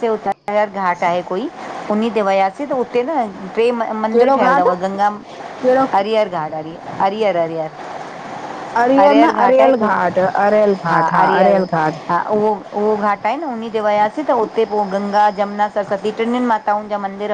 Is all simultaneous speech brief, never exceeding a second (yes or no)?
yes